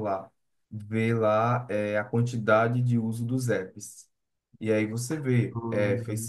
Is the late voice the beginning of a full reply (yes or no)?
no